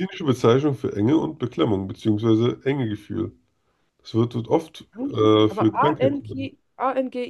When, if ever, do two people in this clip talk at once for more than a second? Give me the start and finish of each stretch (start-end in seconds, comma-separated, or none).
4.9-6.5